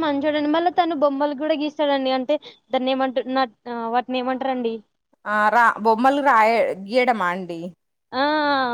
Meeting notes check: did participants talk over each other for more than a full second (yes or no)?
no